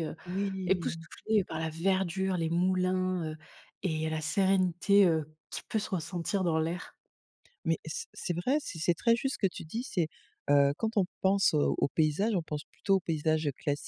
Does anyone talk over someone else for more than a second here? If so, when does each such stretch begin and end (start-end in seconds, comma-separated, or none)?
none